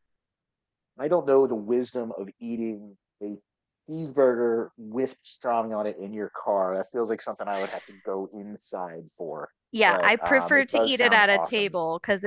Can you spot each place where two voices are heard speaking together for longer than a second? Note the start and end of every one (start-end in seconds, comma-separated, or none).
9.8-11.8